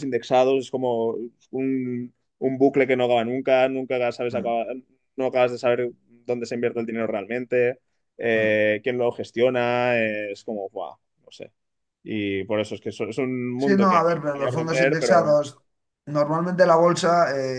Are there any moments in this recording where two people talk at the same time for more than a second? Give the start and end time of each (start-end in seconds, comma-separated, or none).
13.6-15.4